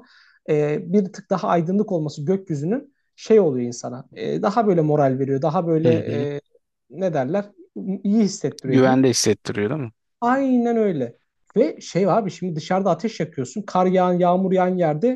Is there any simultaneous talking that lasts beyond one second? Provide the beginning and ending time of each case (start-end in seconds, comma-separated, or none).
none